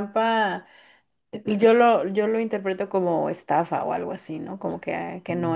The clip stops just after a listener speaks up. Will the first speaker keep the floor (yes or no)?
no